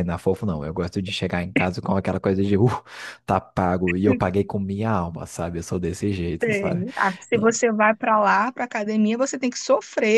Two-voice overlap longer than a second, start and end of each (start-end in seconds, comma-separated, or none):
none